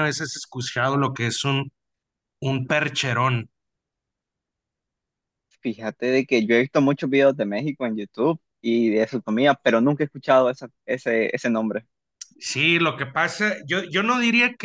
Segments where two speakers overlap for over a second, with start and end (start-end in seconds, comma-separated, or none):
none